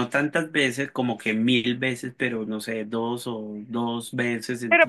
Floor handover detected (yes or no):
yes